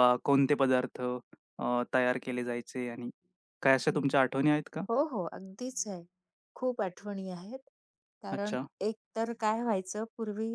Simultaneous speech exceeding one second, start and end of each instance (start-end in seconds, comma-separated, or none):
none